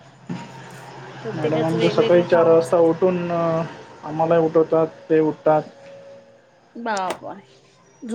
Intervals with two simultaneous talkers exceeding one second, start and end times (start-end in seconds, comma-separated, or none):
1.4-2.9